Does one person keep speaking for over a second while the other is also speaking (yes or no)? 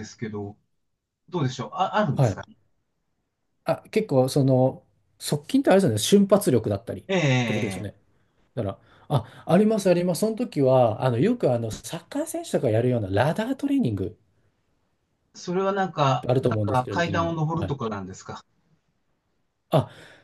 yes